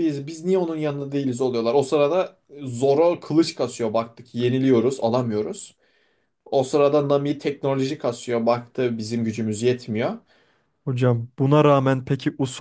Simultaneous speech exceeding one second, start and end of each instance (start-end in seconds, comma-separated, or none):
none